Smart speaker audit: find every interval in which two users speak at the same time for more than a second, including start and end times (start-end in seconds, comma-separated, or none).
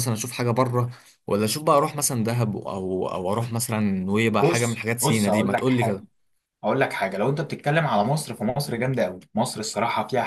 4.4-6.0